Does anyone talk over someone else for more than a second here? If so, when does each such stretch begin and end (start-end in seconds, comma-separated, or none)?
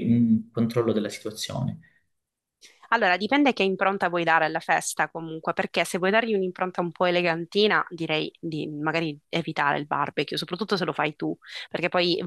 none